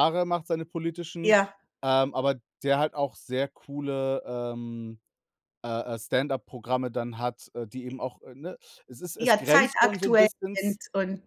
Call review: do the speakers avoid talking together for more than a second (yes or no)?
no